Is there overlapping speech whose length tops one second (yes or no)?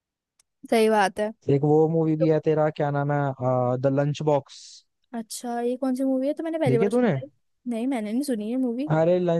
no